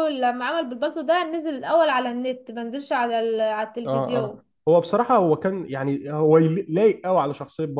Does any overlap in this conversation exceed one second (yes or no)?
no